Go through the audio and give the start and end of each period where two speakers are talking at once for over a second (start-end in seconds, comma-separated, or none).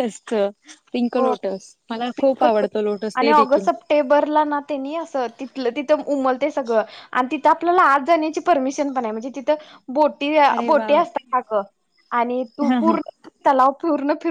none